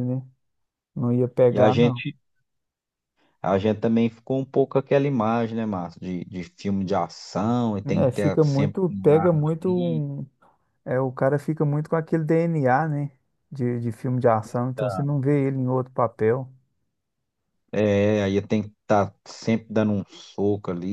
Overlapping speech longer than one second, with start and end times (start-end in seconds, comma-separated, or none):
7.8-10.0